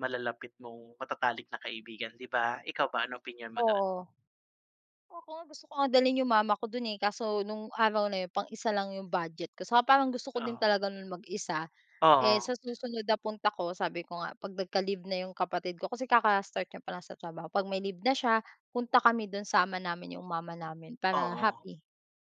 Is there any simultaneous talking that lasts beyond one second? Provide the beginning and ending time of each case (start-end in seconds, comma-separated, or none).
none